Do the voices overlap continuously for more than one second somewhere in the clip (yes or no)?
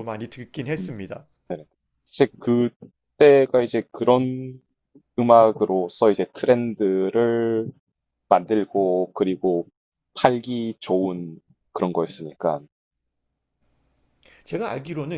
no